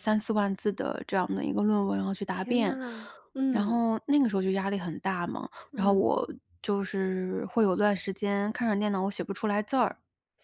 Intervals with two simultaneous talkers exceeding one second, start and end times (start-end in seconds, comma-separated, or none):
none